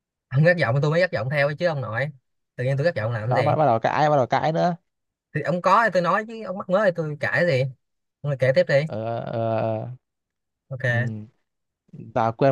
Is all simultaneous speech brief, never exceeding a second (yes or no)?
yes